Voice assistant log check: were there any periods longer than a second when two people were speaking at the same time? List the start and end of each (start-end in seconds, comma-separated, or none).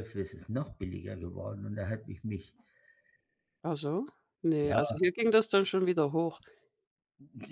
none